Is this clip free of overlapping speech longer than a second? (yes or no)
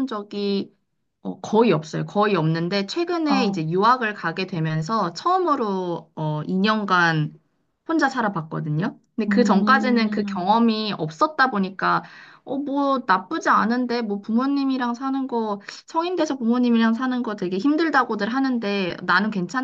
no